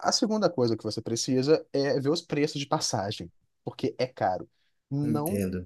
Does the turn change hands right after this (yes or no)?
no